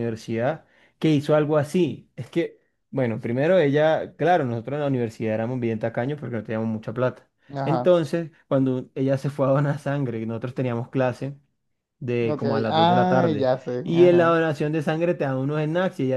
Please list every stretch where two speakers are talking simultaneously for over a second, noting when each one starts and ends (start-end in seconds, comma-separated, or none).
12.2-14.3